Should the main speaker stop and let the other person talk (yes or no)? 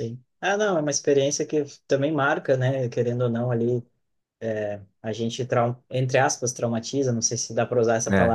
no